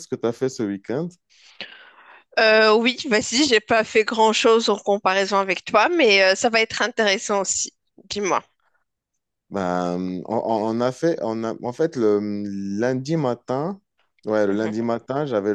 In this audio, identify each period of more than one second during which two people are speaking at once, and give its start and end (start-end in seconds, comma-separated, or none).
none